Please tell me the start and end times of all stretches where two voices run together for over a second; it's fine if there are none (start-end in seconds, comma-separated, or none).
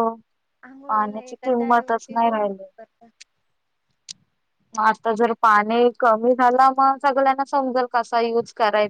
1.2-2.7